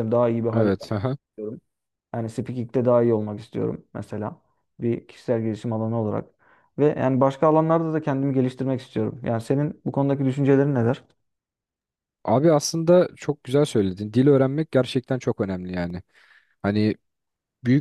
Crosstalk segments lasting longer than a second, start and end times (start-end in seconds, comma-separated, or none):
none